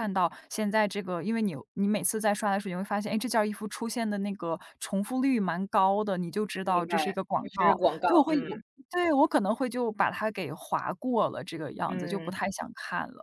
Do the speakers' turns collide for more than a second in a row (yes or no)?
yes